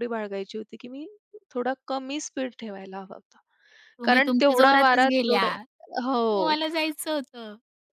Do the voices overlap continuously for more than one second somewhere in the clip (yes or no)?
yes